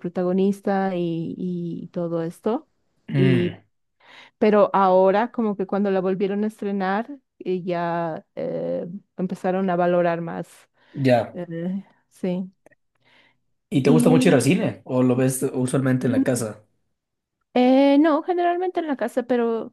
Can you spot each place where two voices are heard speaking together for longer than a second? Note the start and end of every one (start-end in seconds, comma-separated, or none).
none